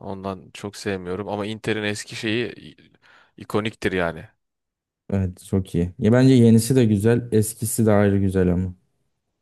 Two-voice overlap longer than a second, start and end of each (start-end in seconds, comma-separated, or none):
none